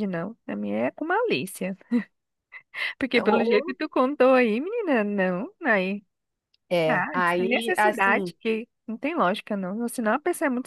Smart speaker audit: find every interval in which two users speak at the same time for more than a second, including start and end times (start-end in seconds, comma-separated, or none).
6.9-8.3